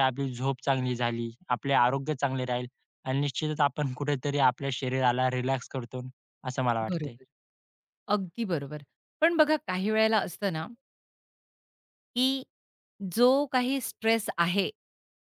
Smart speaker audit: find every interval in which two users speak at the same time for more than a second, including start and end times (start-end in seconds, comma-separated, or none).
none